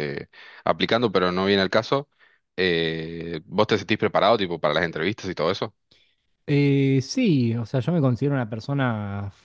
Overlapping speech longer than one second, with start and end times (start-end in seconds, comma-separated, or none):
none